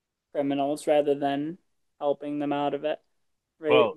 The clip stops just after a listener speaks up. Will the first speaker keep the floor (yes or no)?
yes